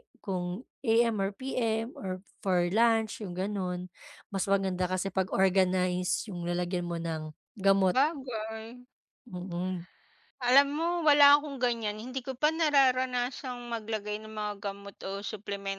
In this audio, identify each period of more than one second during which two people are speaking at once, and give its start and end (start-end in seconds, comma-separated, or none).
none